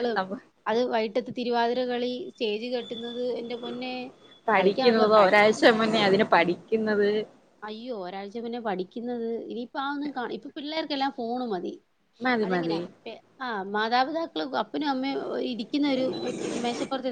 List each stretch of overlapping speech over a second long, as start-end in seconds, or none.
4.6-6.2